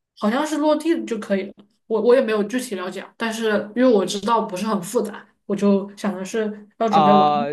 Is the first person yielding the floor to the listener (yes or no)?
yes